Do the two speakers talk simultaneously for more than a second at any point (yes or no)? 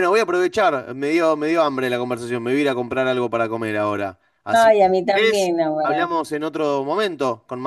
yes